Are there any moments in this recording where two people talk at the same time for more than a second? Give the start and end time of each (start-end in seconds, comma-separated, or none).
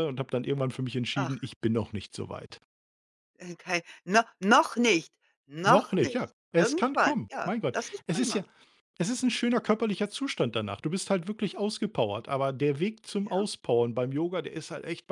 5.7-8.4